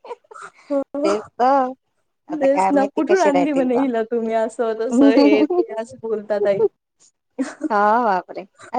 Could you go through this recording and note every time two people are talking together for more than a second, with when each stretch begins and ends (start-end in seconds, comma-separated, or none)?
2.4-3.8